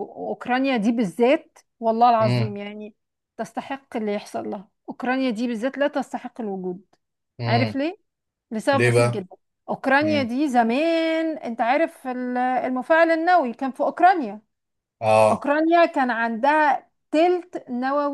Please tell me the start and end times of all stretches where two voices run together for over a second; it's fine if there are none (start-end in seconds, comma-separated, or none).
none